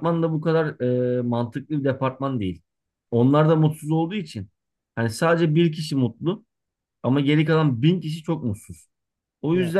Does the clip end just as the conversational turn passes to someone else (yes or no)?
no